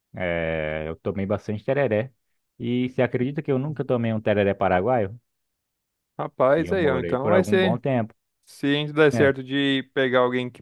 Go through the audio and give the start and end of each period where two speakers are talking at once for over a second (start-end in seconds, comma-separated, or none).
6.6-7.8